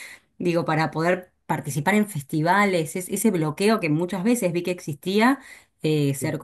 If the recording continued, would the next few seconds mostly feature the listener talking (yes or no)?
no